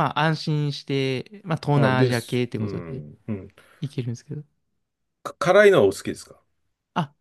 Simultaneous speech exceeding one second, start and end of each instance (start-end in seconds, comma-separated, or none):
1.7-3.0